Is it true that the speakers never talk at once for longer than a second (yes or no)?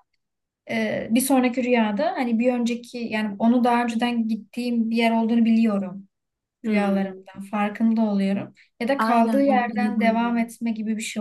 no